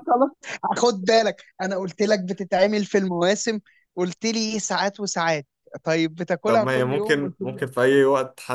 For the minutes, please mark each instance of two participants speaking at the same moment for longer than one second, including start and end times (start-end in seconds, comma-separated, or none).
6.5-7.7